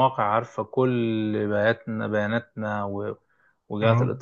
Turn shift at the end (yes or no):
no